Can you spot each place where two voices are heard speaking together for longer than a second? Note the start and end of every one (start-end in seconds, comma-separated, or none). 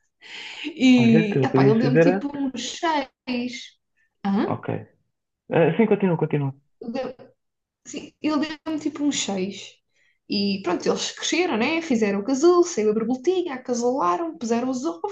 1.0-2.3